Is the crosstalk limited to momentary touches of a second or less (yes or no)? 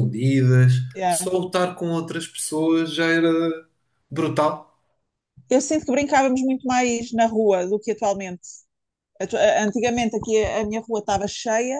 yes